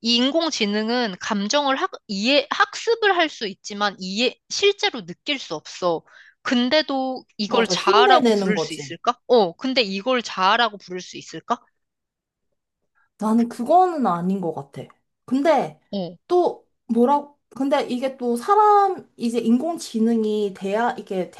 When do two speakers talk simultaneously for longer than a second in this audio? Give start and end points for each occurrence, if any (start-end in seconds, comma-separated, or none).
7.5-9.0